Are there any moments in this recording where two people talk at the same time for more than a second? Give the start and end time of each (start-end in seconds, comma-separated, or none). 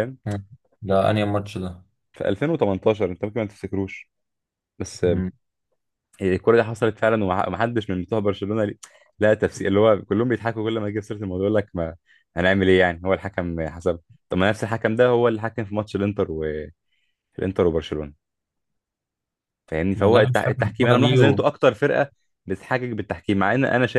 20.0-21.2